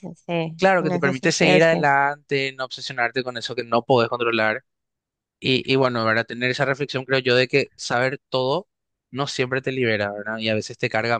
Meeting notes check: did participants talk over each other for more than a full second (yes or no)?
yes